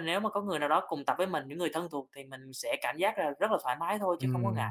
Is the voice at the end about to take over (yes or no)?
yes